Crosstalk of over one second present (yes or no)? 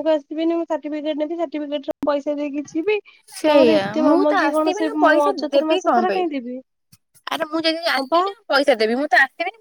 yes